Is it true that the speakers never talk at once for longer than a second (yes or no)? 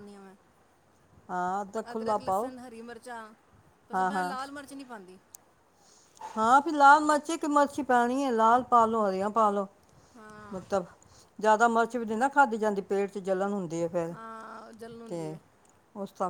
no